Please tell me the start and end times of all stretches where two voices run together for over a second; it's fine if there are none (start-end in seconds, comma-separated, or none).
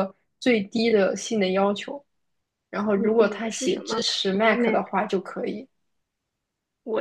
2.9-4.8